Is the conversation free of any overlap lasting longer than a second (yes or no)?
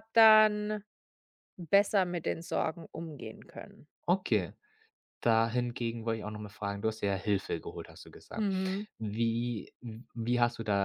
yes